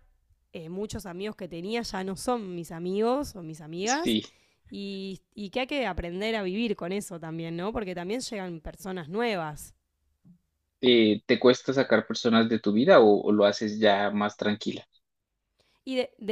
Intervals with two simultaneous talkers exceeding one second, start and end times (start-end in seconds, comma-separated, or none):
none